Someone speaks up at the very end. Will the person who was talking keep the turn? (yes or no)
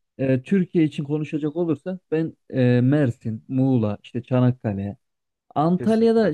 yes